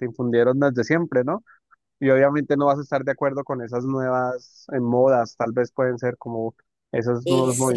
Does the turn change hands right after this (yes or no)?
yes